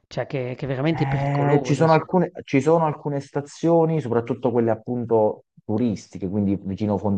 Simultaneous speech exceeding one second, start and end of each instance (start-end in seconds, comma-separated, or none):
0.9-2.1